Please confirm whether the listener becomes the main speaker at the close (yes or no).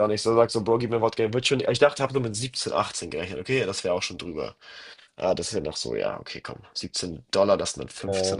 no